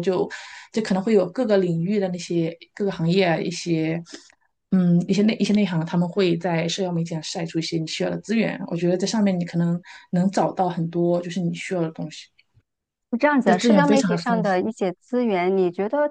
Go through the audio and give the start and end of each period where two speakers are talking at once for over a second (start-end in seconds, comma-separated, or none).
13.4-14.7